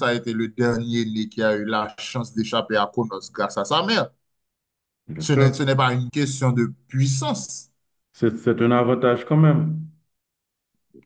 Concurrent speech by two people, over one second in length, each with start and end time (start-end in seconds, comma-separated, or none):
none